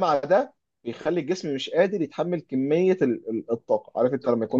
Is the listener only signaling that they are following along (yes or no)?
yes